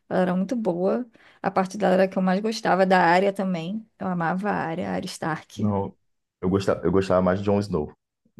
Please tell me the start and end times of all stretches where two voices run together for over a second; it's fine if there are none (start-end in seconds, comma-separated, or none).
none